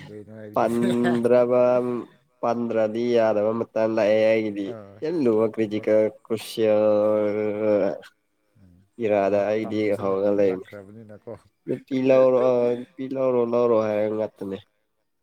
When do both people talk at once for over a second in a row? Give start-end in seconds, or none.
none